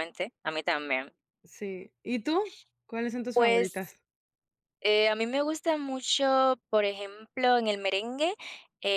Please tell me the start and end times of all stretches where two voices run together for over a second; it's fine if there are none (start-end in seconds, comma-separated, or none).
none